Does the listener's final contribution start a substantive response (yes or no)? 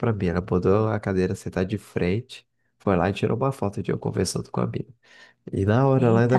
no